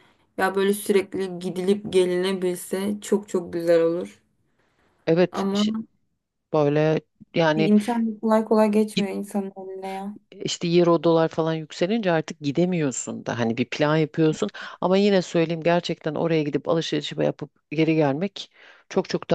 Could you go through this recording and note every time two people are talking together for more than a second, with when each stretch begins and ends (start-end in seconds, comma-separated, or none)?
none